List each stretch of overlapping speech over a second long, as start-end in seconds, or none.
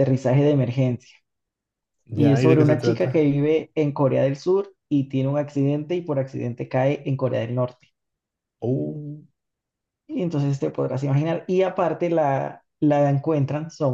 2.1-3.3